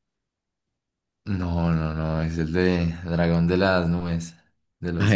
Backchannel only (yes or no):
no